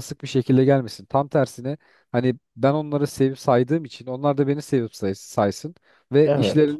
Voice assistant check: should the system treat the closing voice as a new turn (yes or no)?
no